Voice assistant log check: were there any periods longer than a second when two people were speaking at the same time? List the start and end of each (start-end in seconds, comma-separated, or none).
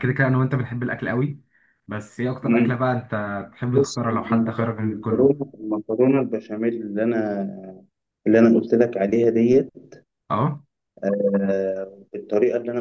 3.7-5.4